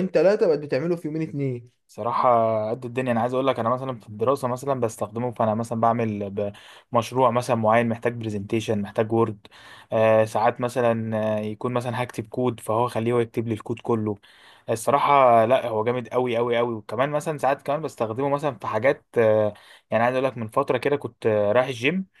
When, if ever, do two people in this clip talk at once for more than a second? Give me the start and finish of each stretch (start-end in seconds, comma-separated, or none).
none